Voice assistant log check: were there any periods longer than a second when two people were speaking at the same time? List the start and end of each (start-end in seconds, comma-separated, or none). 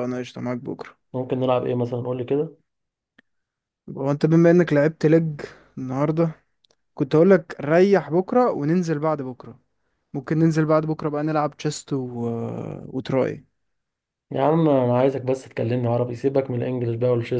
none